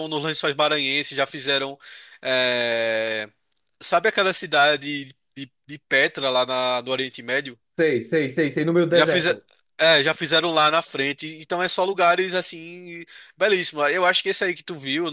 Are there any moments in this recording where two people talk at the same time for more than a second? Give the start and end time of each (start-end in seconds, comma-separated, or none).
none